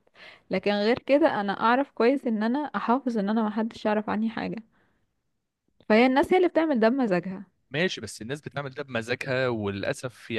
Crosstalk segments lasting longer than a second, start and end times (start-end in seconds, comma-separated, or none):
none